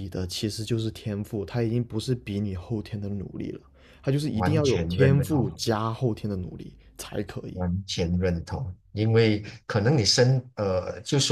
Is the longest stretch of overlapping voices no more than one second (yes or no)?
no